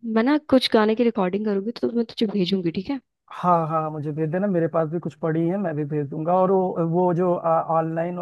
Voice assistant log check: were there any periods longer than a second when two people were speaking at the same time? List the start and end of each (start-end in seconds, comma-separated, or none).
none